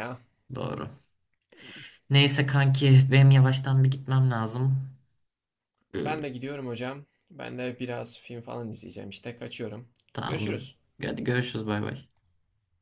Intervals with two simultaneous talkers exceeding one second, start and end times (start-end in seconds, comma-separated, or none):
none